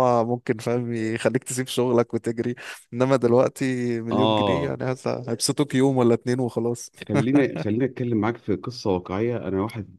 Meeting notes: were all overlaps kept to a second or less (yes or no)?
yes